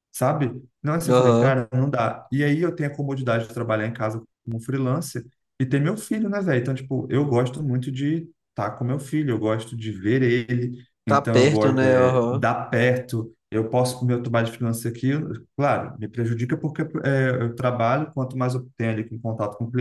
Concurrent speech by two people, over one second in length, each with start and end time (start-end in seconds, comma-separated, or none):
11.1-12.5